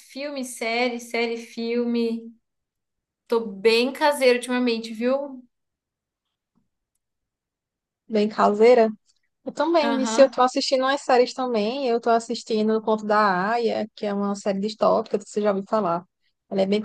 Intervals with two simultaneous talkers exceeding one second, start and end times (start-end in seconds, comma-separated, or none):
none